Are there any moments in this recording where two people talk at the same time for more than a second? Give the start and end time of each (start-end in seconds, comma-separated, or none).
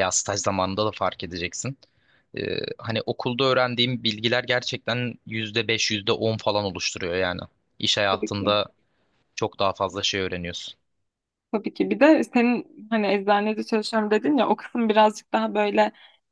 none